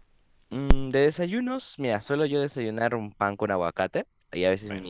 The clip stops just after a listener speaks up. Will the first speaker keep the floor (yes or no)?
yes